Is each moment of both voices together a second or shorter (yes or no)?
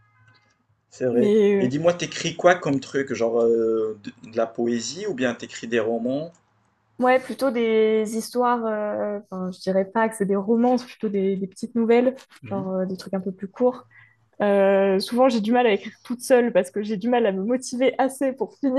yes